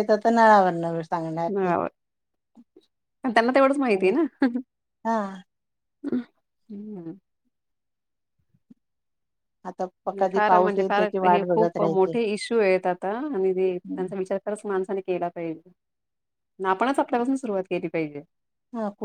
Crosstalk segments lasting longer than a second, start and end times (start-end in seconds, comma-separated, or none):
10.3-12.2